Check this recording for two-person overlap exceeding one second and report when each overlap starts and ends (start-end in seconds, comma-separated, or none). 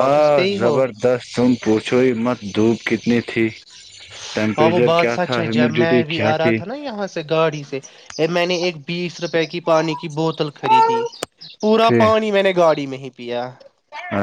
4.6-6.8